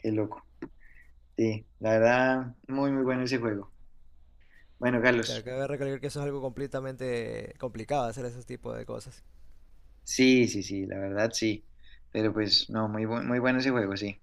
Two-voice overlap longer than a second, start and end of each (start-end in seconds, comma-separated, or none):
none